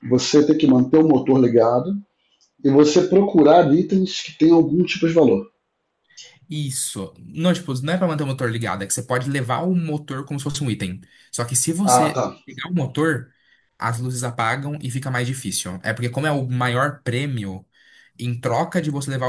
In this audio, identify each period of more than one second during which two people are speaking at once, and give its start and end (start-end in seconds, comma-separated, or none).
none